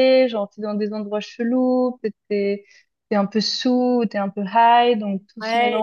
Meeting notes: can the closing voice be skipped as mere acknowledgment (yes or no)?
no